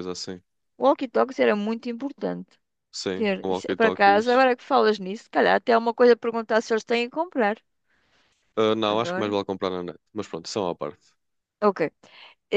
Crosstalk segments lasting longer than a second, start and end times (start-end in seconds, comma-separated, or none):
3.1-4.5